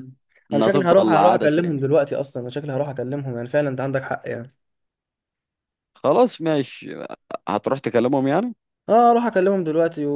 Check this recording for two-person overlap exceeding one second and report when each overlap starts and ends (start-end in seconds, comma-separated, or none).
0.5-1.8